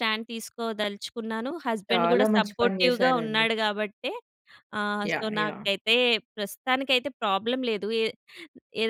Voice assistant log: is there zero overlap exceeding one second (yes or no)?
no